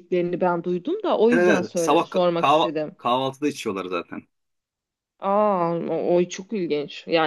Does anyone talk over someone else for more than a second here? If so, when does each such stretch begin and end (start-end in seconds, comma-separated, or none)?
1.3-3.0